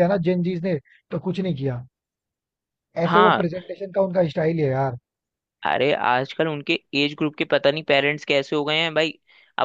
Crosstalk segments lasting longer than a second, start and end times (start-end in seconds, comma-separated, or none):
none